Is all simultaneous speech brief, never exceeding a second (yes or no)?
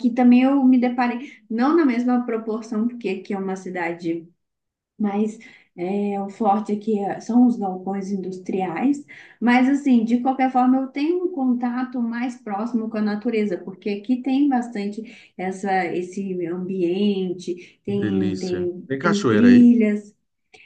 no